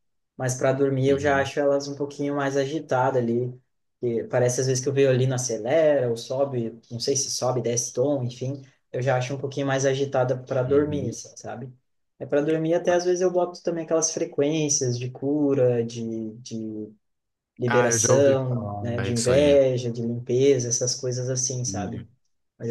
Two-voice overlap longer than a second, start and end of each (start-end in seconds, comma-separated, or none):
17.7-19.6